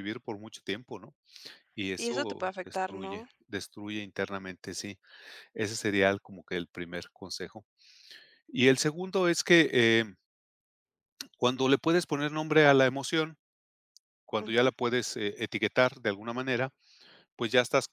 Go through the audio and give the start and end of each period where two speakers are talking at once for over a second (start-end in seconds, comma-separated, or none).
2.0-3.3